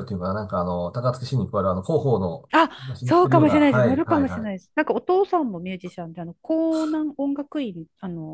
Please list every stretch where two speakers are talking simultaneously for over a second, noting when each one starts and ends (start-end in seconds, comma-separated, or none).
2.5-4.7